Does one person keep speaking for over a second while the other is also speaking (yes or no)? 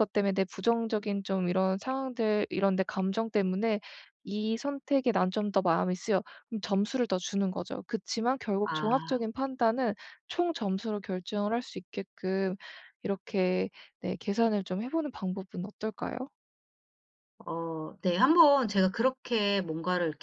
no